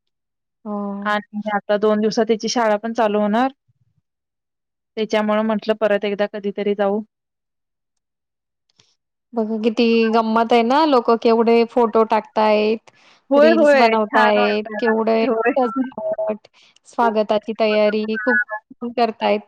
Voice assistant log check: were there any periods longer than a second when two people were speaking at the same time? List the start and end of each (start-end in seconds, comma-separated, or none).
13.4-15.9